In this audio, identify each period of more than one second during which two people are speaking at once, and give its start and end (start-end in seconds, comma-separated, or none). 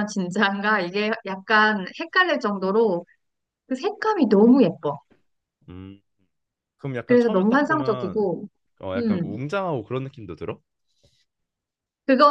7.1-8.3